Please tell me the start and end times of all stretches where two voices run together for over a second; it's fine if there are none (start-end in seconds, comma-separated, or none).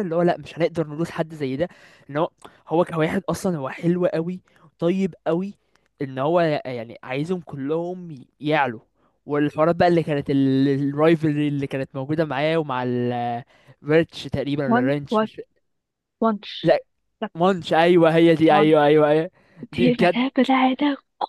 none